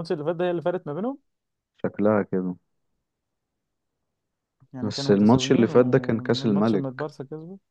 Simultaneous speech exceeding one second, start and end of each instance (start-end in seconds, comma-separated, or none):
4.8-7.1